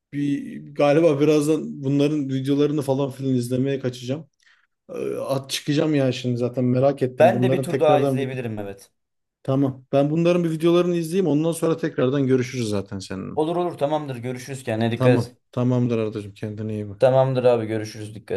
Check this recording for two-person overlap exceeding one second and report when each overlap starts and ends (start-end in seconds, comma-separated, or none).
7.2-8.4